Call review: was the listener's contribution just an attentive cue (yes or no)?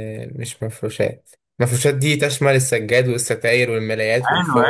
no